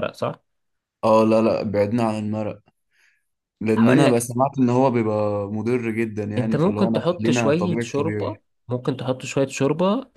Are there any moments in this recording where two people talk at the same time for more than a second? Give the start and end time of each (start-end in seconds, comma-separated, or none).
6.4-8.4